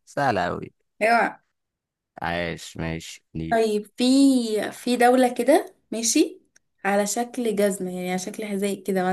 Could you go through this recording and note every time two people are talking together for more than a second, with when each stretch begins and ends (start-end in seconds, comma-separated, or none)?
none